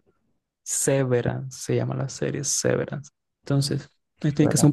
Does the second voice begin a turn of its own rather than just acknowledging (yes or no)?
no